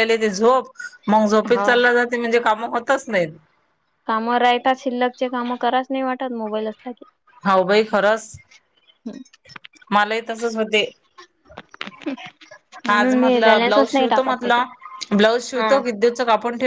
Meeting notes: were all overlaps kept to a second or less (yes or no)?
no